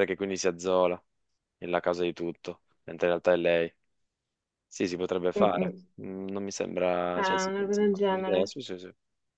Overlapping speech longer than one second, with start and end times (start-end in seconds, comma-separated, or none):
7.1-8.5